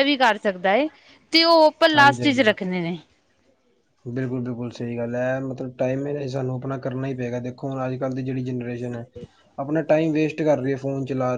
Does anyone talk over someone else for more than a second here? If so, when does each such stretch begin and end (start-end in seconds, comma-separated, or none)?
none